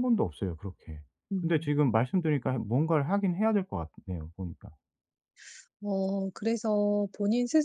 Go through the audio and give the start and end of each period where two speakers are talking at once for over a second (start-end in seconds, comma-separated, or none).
none